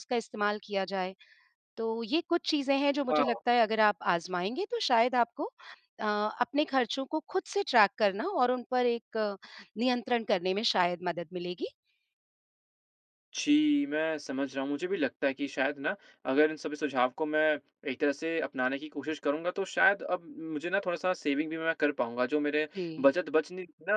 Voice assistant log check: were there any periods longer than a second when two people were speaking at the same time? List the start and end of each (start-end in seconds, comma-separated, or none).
none